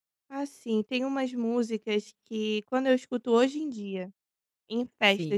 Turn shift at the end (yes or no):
no